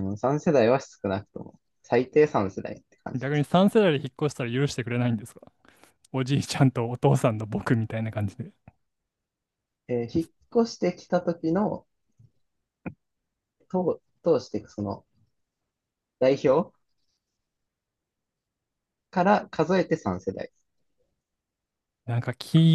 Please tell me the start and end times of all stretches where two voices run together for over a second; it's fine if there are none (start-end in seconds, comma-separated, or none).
none